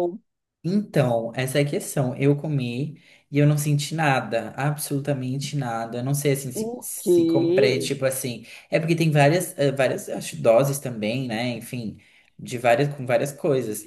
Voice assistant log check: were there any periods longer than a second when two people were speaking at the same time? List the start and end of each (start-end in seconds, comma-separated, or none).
6.5-7.9